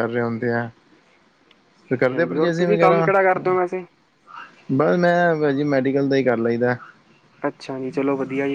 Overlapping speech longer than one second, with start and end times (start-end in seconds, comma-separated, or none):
1.9-3.5